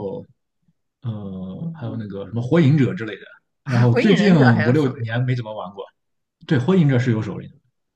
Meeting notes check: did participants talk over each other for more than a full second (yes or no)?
yes